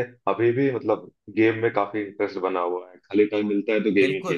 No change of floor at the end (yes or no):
no